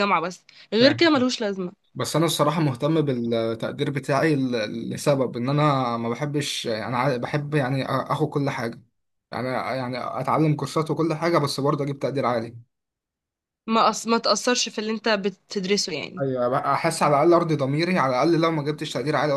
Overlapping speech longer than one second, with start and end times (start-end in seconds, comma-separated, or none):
none